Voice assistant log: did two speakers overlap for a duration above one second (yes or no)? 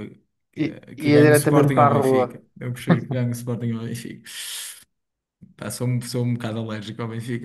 yes